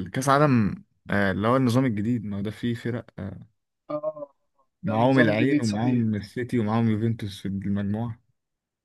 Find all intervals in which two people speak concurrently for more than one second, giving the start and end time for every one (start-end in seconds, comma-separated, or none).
4.9-6.1